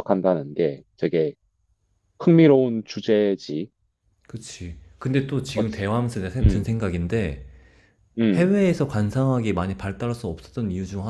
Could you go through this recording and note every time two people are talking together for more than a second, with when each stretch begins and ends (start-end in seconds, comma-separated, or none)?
none